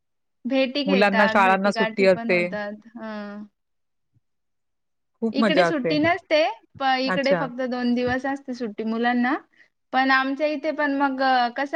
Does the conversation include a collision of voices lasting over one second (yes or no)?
yes